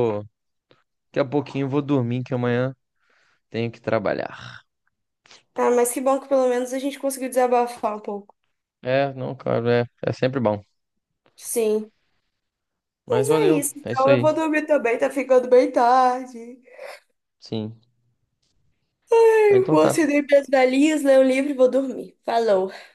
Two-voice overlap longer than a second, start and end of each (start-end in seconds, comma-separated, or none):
13.1-14.3